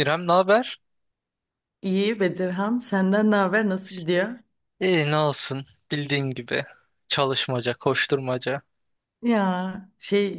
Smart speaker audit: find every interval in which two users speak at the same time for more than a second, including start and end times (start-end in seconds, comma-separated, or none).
none